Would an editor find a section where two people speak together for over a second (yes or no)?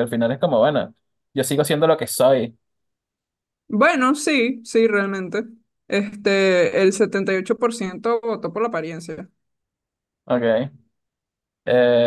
no